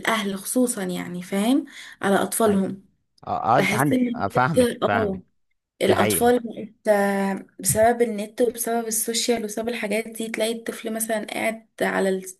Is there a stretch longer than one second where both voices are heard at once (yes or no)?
yes